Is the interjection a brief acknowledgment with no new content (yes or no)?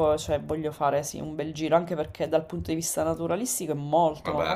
yes